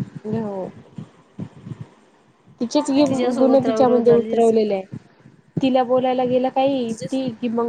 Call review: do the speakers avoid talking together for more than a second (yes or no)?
no